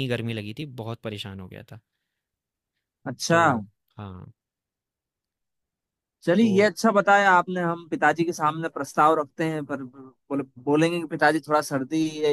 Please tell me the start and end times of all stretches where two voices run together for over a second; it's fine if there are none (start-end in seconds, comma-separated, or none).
none